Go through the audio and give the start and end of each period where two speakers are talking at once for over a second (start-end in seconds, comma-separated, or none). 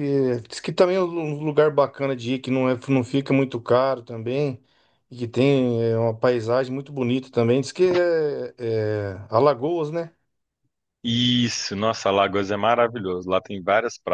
none